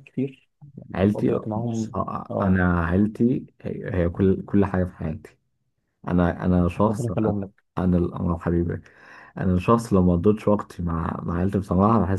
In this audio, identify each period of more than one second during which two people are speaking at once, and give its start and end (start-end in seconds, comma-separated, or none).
0.9-2.6